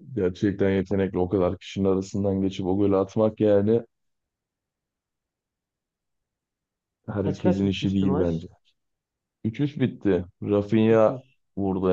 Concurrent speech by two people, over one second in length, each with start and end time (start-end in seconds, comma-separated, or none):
7.2-8.4